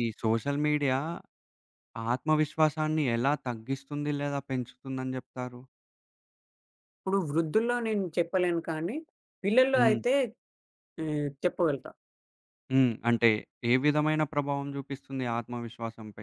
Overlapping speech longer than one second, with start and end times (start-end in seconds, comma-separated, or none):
none